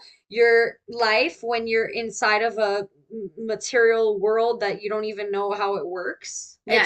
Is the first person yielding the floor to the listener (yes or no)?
yes